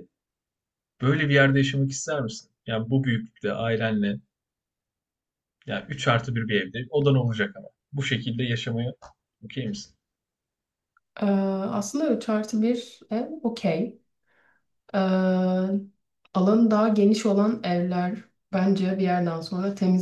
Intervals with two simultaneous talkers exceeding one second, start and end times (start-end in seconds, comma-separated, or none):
none